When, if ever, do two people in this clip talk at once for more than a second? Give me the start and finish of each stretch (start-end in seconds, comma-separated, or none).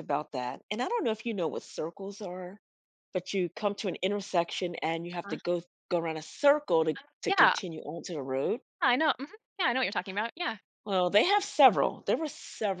none